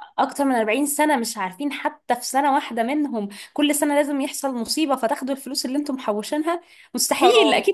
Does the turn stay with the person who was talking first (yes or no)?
yes